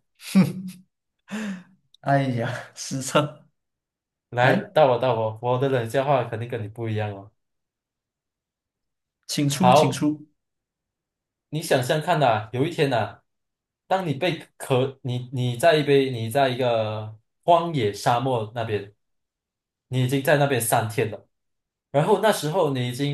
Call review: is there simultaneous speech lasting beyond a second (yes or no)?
no